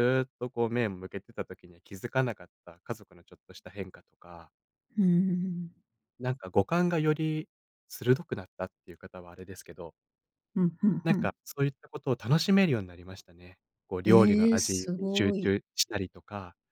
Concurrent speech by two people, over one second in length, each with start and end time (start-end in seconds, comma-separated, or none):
14.0-15.6